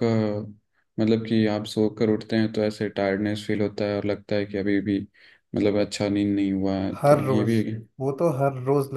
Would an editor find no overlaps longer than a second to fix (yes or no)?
yes